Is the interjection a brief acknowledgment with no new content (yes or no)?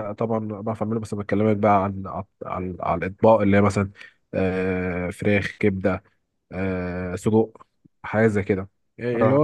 yes